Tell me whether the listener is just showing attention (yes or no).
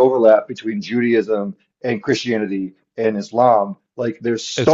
yes